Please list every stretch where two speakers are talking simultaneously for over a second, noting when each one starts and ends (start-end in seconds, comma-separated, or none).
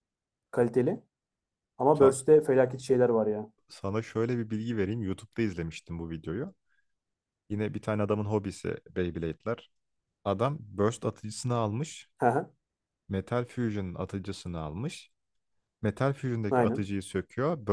none